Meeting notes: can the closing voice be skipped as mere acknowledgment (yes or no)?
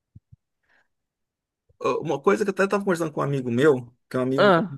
yes